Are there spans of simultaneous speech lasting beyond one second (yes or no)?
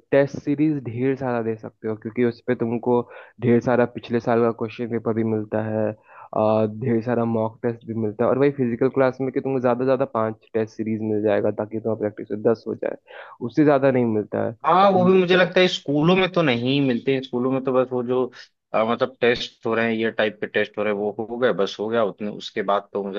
no